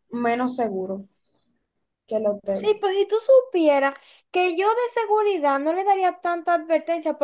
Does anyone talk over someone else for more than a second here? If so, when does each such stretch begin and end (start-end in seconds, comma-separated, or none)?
none